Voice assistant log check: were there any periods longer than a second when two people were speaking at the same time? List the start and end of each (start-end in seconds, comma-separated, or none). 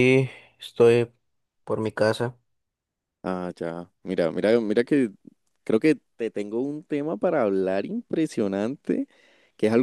none